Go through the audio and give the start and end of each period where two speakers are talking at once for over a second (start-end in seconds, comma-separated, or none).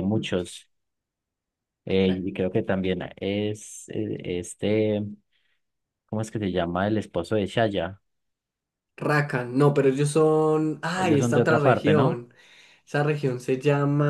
10.9-12.2